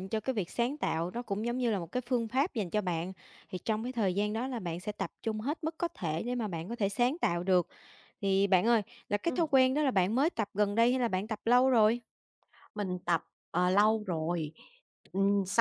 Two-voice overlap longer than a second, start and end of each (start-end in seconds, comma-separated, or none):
none